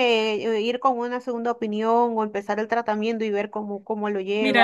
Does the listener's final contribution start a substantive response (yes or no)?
yes